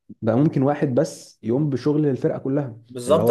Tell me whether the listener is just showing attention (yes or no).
no